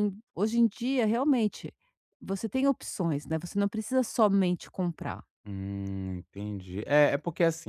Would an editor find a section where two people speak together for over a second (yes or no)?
no